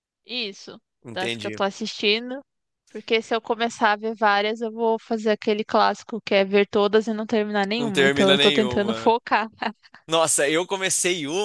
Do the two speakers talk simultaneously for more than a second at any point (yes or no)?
yes